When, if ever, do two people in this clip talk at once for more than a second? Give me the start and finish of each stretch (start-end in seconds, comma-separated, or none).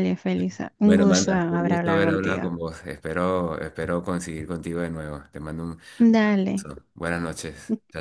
0.8-2.4